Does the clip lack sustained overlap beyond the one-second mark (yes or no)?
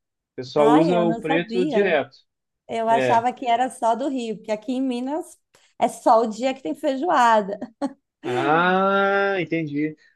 no